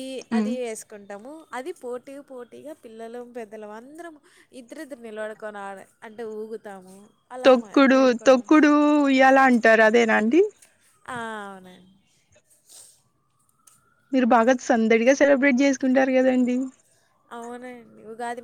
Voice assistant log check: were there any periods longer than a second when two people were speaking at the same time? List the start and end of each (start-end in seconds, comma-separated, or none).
none